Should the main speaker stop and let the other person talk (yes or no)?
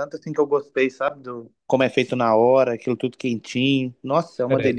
yes